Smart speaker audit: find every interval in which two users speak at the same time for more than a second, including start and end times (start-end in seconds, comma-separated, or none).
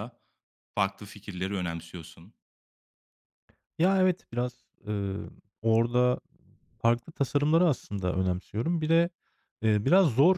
none